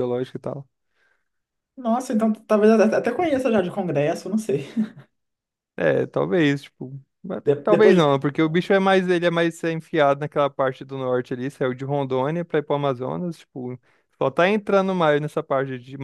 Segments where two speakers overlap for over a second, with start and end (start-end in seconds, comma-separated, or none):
none